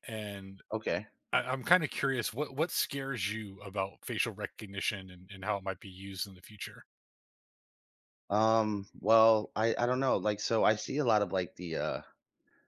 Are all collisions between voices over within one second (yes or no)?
yes